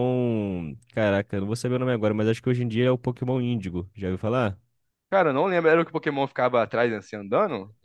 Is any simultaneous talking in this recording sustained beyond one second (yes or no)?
no